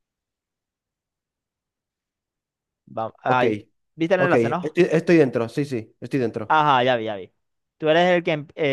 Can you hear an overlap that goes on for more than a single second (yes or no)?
no